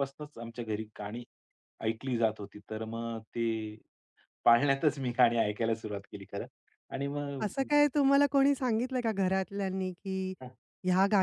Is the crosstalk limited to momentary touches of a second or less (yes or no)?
yes